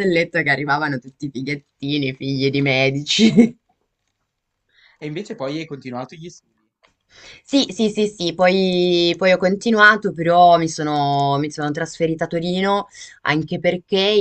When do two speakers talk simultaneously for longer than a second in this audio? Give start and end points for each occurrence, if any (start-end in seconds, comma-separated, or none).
none